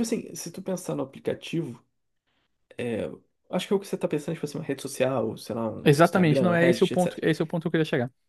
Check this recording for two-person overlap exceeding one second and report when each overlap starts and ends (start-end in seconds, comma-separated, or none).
5.8-7.2